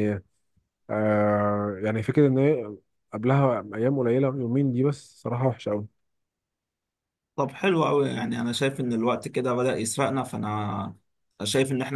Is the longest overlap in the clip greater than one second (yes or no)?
no